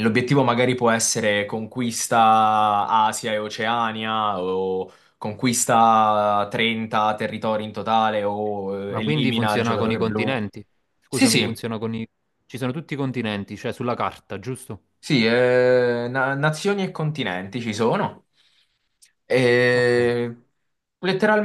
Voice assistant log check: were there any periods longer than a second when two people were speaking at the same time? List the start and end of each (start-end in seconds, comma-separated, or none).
8.9-10.4